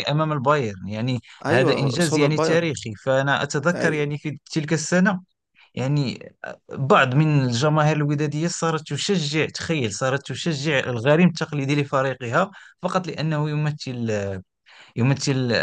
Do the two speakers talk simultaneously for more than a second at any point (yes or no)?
yes